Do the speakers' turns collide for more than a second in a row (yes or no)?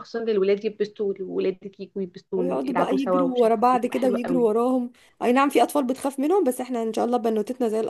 yes